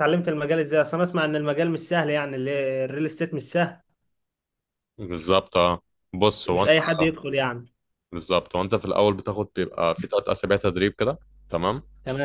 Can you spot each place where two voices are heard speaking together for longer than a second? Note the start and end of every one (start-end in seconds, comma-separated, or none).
none